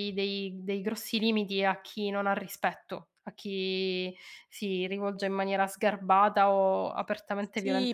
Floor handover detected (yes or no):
yes